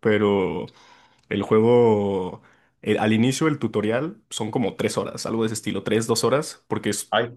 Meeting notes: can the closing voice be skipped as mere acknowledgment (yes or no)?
yes